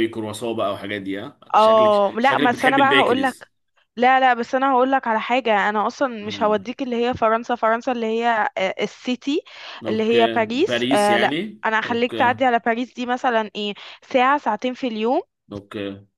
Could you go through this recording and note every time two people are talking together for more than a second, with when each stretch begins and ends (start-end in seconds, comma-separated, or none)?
1.5-3.5, 9.9-12.4